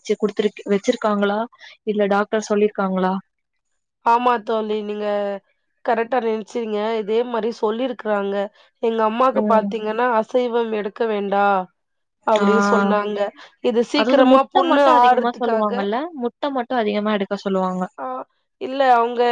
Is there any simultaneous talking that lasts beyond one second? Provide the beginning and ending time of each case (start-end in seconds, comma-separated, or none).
14.0-15.9